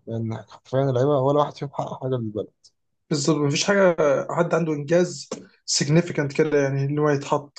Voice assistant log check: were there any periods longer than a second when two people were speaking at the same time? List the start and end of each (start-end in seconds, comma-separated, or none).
none